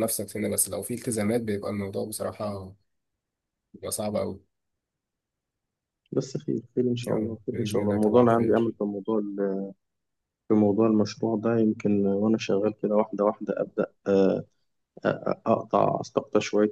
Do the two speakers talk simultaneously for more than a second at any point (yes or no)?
yes